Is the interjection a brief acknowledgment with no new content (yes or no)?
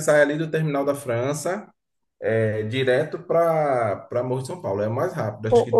no